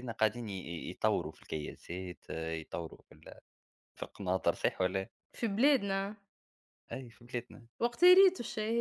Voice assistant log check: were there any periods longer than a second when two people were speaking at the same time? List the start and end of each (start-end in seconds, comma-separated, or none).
none